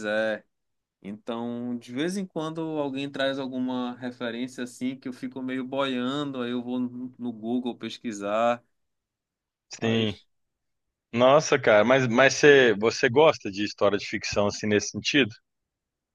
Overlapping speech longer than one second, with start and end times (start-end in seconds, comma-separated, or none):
none